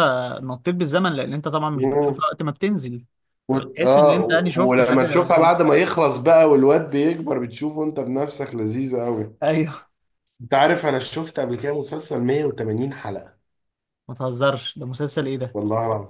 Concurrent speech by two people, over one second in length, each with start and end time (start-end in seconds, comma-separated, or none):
3.5-5.1